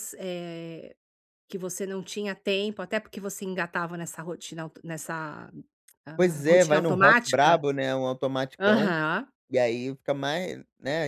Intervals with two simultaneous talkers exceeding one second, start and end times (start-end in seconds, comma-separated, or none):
6.2-7.6